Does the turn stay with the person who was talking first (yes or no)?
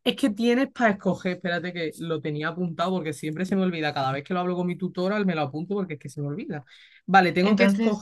yes